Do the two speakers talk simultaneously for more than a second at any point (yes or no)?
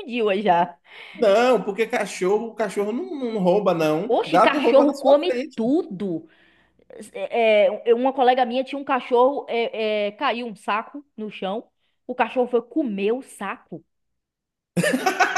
yes